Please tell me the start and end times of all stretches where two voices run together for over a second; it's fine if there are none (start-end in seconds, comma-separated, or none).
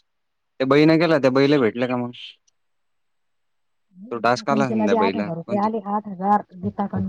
4.1-5.7